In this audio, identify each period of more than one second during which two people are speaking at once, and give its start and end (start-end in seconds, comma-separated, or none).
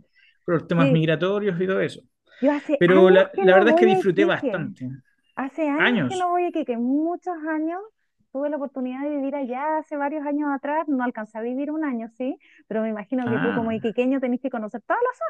2.8-4.7